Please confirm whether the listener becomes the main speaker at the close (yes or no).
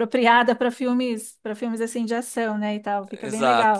no